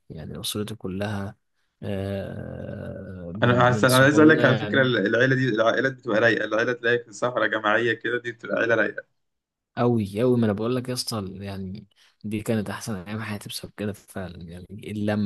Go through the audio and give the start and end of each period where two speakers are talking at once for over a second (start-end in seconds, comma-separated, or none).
3.4-5.0